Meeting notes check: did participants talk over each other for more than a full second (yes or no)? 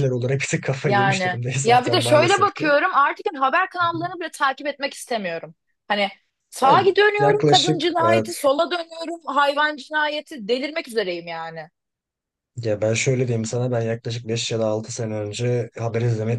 yes